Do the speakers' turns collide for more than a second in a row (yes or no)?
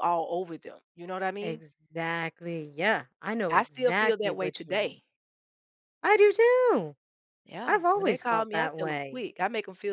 yes